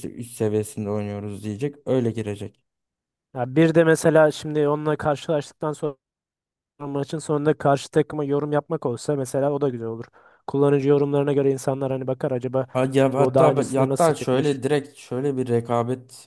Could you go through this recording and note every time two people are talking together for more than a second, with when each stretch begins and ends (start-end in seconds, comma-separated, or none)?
13.2-14.6